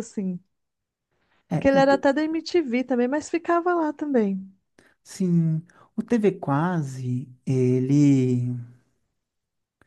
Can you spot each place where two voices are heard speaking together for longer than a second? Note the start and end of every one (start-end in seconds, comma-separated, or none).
none